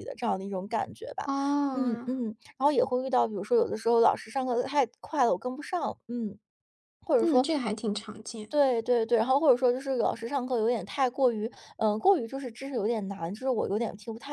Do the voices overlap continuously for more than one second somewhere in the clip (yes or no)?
no